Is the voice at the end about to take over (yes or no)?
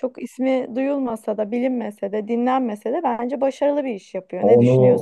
yes